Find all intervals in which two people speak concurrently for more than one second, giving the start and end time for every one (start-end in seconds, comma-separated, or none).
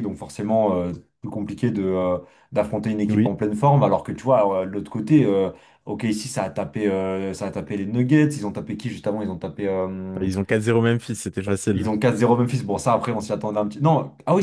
none